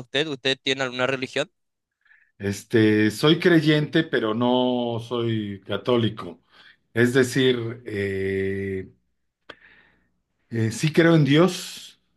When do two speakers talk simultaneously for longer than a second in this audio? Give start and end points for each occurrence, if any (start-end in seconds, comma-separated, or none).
none